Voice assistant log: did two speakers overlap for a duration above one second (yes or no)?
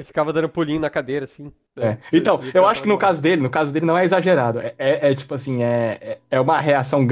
yes